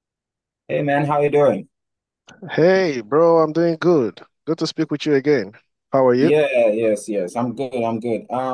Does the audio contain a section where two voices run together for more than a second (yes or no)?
no